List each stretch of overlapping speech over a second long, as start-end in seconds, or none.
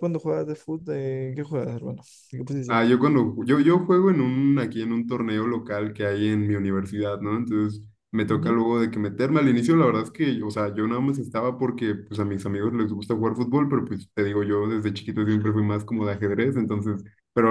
none